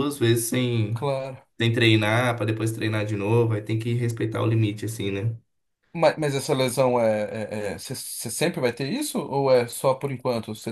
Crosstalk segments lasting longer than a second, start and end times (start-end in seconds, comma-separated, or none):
none